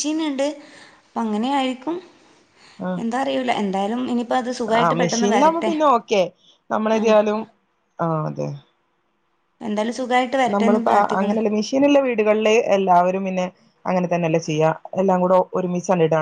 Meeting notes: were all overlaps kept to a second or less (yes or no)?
yes